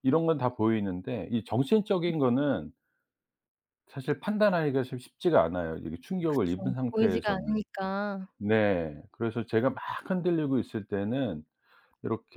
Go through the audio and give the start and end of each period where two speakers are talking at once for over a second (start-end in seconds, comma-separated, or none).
6.3-7.6